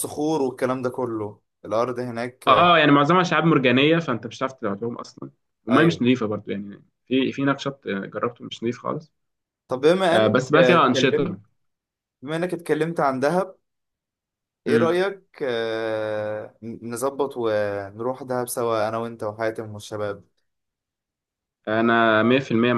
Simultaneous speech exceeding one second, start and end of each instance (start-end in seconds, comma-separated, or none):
10.1-11.4